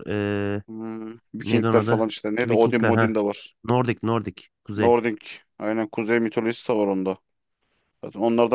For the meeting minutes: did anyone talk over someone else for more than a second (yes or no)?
yes